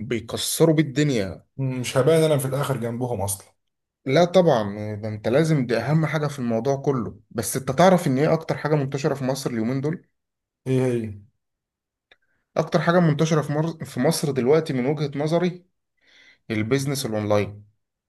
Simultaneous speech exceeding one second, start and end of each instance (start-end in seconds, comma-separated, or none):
none